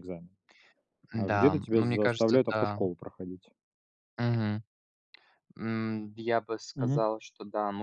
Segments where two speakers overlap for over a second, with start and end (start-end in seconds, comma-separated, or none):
1.1-2.8